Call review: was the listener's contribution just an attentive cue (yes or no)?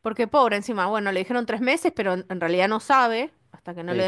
no